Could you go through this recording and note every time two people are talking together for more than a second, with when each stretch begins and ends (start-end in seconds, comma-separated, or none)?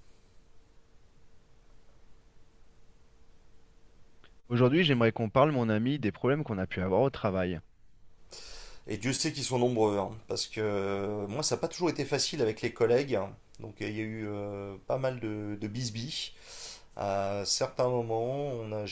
none